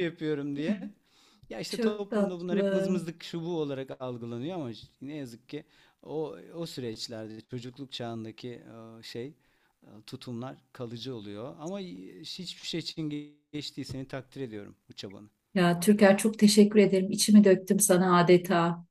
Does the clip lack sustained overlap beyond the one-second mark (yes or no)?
no